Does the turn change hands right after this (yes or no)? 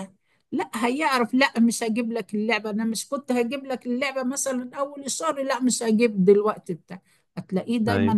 no